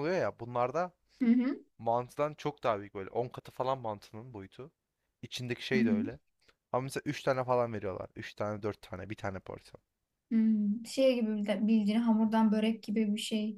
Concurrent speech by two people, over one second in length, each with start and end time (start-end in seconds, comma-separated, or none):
none